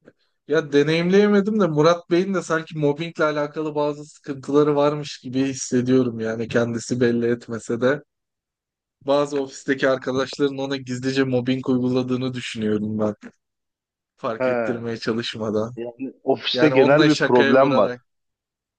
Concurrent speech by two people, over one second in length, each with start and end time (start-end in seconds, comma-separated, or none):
16.5-17.9